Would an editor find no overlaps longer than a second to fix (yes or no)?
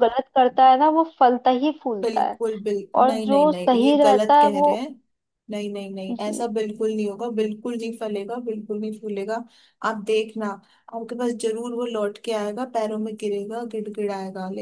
no